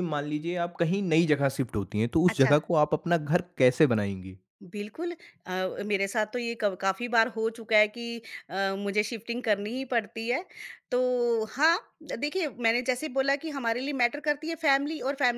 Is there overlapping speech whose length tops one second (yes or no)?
no